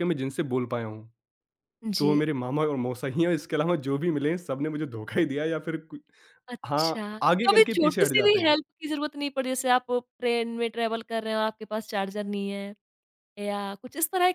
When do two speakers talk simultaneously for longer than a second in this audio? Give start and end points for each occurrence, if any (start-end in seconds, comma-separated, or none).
6.7-8.5